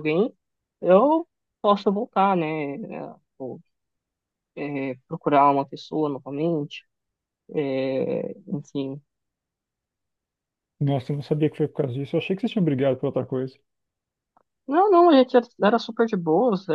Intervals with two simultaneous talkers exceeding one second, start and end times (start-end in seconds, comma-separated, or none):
none